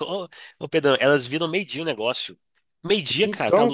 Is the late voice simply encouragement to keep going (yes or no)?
yes